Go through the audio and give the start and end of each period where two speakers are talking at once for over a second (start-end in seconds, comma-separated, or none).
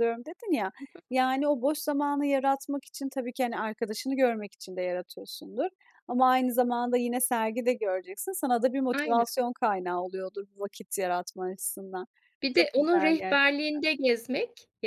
12.5-13.8